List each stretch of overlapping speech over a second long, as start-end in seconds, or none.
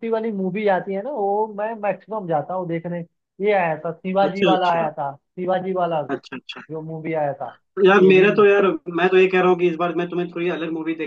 none